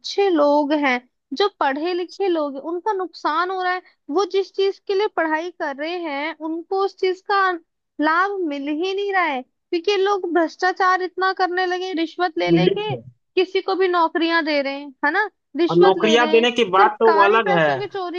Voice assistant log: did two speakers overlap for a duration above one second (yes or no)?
yes